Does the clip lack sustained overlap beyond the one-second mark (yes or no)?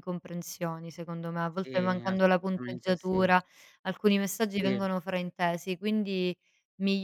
no